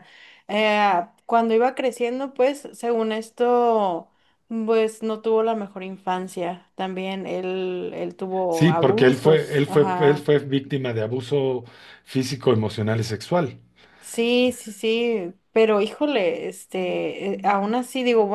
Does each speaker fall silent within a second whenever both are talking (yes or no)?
no